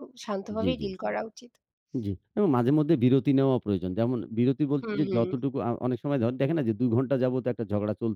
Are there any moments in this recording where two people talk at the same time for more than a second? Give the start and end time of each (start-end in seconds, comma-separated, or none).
none